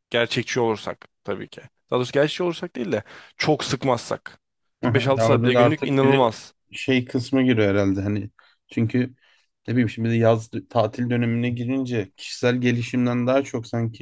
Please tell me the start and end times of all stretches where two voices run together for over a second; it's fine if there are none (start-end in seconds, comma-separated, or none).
4.8-6.3